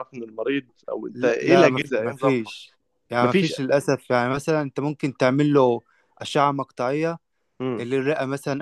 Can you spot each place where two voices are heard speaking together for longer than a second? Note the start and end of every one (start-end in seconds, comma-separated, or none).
1.1-2.5